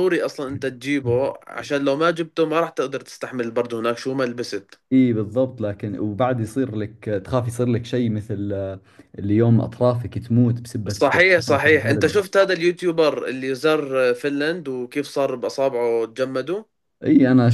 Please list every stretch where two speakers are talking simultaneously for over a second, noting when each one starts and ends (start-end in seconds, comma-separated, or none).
10.9-12.2